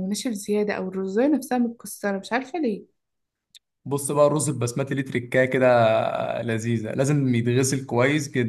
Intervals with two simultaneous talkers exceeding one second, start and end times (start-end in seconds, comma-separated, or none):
none